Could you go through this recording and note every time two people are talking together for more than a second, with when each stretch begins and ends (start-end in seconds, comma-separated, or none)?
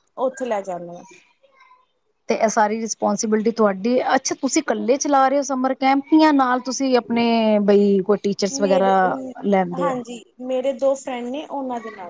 none